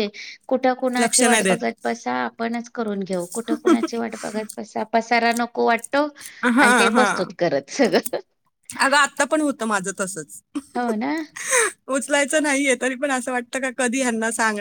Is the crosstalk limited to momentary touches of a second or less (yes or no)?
yes